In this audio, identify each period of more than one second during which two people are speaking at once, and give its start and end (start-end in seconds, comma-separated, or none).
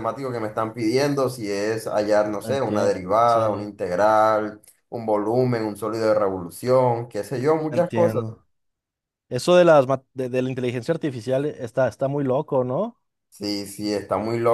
2.4-3.7